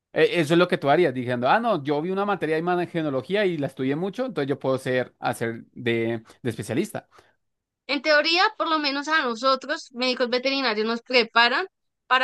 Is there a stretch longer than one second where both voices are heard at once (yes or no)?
no